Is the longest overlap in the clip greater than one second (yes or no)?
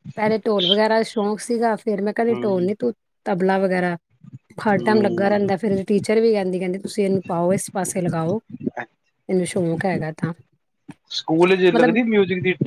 no